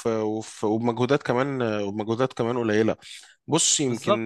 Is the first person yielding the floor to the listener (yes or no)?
no